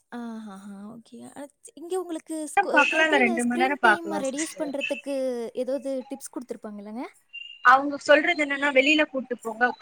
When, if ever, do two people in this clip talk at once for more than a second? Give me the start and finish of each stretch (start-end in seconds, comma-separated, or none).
2.8-4.6